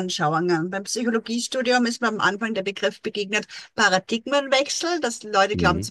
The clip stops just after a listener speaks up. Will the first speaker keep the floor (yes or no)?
yes